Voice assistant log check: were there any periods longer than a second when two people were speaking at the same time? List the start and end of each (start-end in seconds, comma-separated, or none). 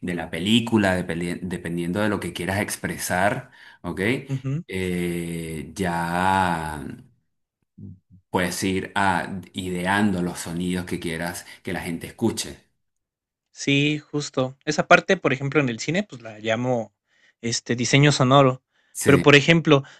none